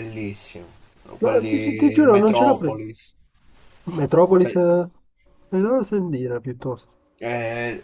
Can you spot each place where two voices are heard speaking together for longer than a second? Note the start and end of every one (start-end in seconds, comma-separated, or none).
1.2-2.8